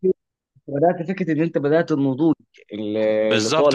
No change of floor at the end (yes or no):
no